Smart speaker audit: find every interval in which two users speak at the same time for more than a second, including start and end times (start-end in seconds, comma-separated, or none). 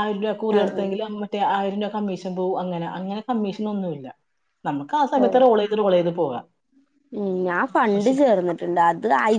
none